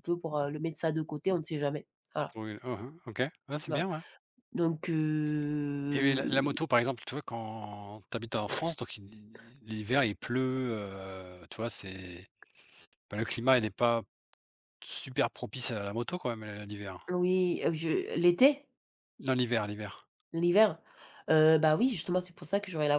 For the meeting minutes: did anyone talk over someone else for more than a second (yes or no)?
no